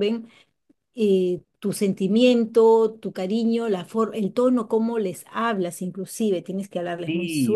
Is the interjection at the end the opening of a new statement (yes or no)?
yes